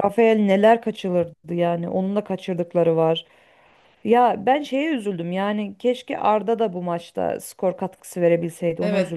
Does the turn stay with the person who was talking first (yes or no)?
no